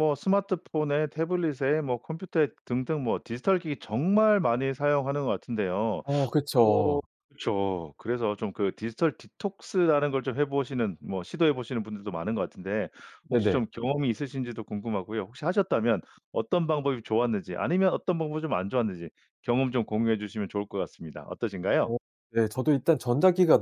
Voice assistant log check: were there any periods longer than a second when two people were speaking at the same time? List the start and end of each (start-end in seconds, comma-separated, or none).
none